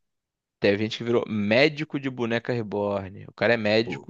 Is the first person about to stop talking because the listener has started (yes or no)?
no